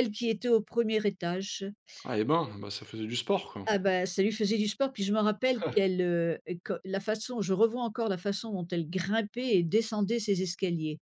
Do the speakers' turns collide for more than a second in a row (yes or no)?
no